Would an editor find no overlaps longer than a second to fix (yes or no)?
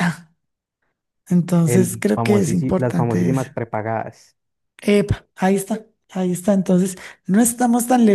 no